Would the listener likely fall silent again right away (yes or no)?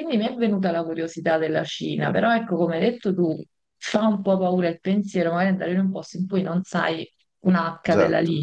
yes